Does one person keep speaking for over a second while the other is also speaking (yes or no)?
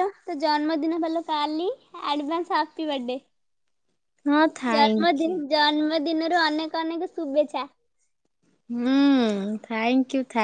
no